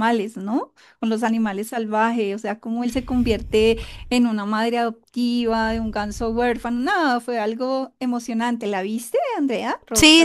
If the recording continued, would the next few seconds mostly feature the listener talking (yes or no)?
yes